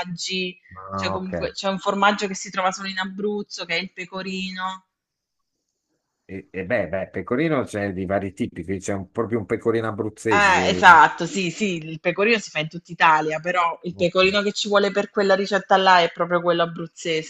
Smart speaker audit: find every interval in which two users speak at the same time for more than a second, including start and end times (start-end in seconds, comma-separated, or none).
none